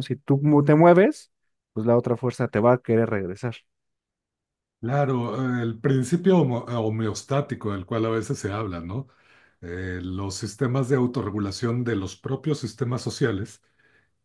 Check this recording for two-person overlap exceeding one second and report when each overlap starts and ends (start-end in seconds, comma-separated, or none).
none